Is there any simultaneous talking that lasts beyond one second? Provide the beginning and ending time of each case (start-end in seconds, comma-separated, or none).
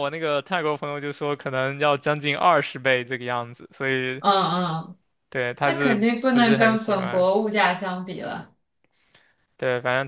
5.6-7.3